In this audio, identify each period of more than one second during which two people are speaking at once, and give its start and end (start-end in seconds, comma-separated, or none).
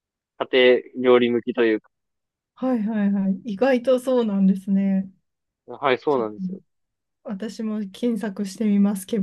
none